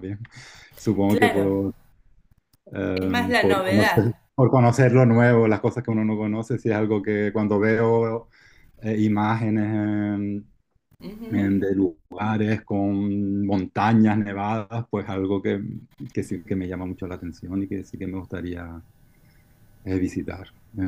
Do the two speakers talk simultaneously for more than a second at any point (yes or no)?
yes